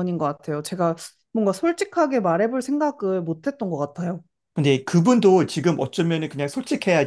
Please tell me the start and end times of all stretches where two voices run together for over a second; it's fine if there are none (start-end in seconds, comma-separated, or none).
none